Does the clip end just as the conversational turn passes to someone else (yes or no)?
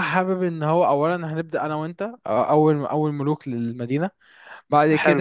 yes